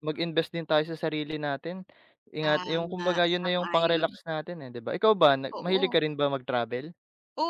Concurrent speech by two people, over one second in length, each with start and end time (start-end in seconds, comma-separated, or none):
2.4-4.1